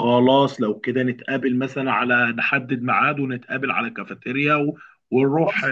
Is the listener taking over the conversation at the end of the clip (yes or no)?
yes